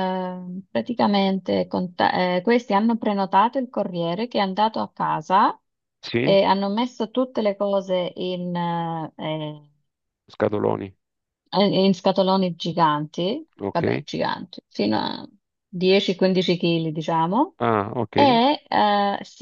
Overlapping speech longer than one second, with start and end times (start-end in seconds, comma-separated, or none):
none